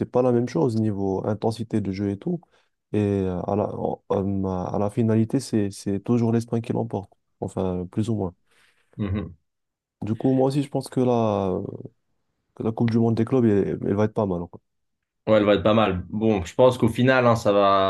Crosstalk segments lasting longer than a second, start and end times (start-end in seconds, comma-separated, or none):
none